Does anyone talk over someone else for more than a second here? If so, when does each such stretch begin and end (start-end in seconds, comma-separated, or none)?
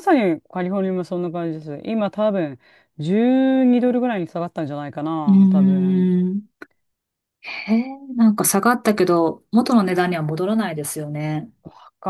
none